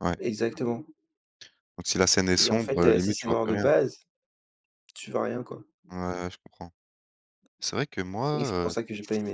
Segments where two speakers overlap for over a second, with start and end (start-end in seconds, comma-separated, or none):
2.3-3.7